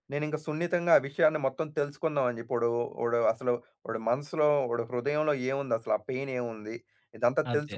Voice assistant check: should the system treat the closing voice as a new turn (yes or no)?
no